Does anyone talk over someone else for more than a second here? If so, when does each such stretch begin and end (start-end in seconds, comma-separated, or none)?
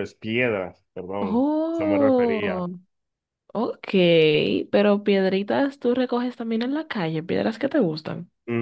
1.2-2.7